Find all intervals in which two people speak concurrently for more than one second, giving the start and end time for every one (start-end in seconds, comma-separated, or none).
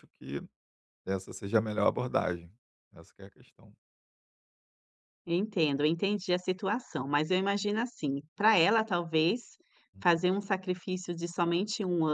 none